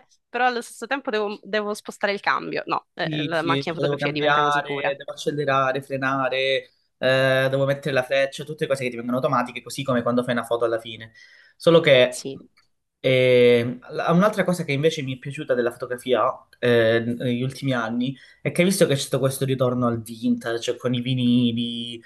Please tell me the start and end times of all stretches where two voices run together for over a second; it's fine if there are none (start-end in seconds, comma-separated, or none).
3.0-4.9